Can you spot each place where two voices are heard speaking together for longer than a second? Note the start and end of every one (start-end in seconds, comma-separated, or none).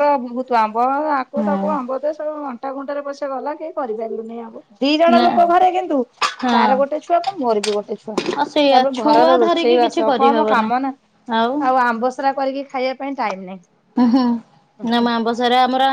8.7-10.7